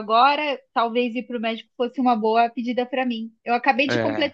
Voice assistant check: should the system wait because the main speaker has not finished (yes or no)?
yes